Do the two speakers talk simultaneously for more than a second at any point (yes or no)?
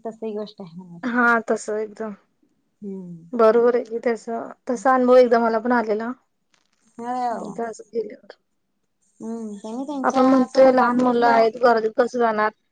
yes